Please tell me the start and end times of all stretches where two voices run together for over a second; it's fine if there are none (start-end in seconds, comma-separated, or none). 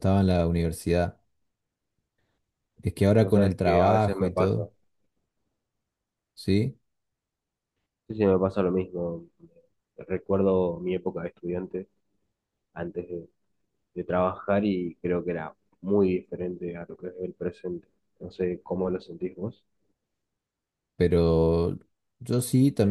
3.2-4.6